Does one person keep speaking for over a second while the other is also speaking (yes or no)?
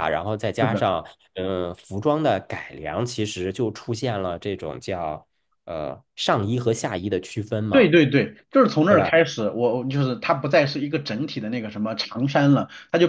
no